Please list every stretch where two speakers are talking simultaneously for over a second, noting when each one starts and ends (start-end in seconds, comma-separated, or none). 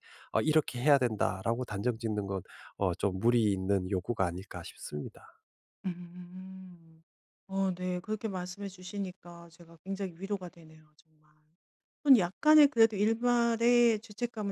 none